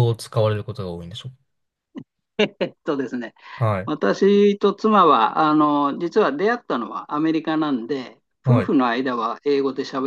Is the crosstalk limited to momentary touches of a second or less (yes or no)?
yes